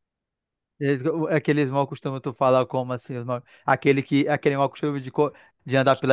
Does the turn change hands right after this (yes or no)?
yes